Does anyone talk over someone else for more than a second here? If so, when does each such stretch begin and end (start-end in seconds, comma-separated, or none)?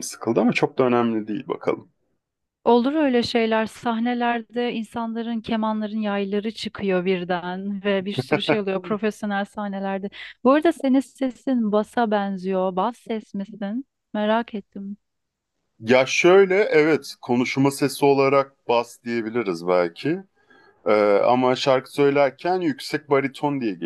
none